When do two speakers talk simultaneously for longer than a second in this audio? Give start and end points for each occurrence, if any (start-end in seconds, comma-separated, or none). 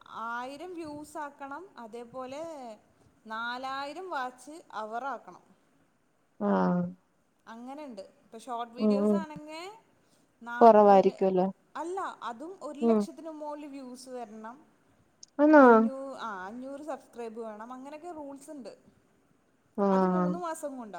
none